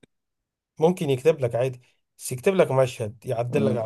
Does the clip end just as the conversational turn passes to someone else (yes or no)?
yes